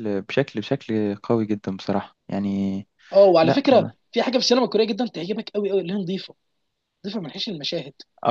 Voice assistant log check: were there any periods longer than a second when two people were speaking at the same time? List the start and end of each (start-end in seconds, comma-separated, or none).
none